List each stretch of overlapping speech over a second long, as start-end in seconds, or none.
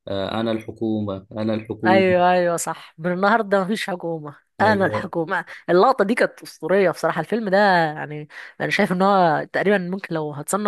none